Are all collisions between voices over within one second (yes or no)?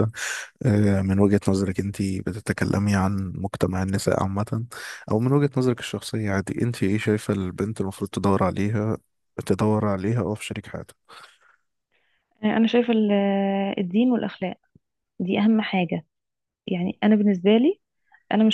yes